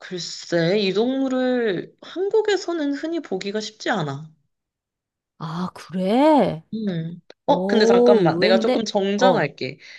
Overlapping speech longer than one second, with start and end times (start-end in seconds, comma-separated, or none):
7.5-9.5